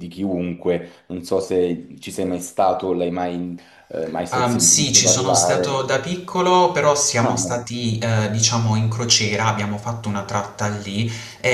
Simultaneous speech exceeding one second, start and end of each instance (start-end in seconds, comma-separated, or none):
4.3-5.9